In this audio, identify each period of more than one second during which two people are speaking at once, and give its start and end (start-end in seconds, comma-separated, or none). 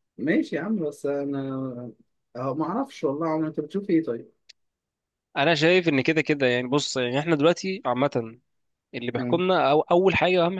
none